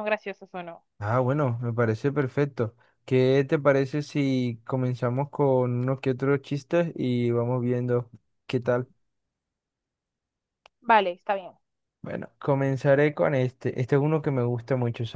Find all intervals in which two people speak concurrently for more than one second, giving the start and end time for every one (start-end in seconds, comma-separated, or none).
none